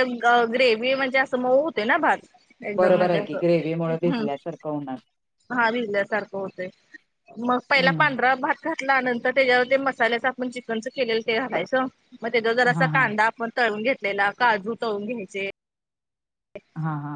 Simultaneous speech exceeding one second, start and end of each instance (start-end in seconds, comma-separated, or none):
none